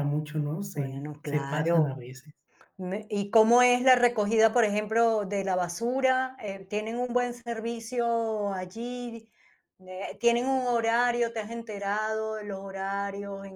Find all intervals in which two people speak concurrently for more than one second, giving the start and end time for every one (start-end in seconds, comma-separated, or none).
0.7-2.0